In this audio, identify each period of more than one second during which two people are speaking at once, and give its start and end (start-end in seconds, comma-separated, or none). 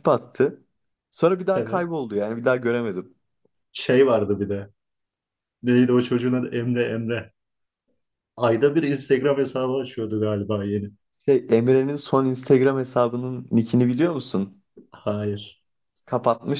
none